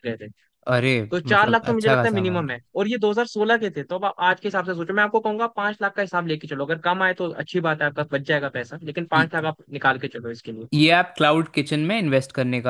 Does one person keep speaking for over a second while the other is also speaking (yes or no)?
yes